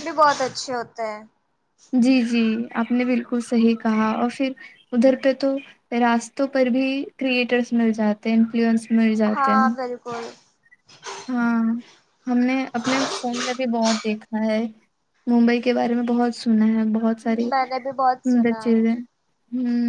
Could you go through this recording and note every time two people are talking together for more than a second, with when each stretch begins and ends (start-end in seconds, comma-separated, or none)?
17.5-19.0